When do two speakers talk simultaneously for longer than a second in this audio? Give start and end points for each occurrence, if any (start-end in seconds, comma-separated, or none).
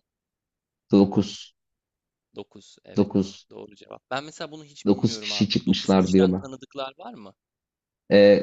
4.8-6.4